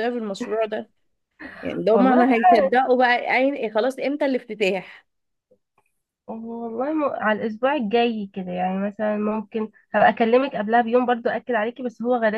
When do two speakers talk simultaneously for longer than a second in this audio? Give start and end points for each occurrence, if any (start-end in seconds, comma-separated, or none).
none